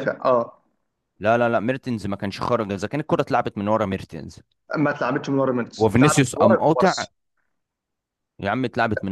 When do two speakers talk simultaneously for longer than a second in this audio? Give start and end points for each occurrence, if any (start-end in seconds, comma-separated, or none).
5.8-7.0